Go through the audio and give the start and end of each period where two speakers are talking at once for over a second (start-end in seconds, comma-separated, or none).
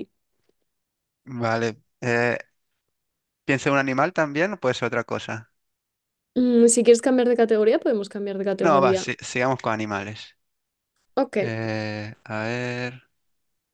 none